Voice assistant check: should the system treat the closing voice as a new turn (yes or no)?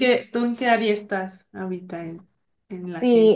yes